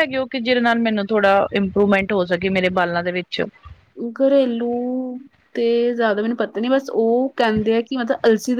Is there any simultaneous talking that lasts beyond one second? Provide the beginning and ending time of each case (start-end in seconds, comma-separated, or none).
none